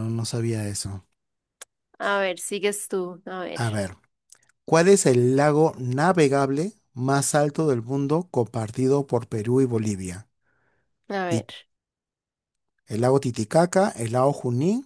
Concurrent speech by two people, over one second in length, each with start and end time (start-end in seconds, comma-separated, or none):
none